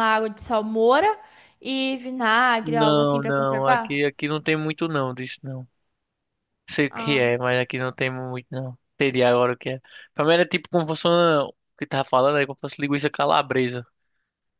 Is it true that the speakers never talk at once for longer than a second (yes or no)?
no